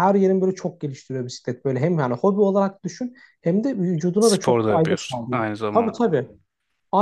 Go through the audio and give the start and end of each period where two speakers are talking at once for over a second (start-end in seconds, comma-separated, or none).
4.2-6.0